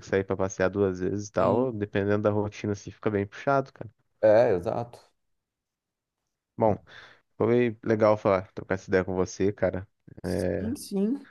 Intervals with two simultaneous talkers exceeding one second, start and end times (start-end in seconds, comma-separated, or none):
none